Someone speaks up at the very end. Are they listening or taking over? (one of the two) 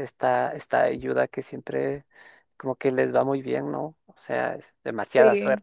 listening